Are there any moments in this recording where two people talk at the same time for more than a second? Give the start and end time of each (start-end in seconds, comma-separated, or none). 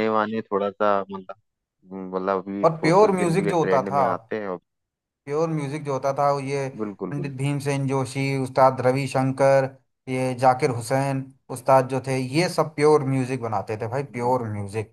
2.6-4.0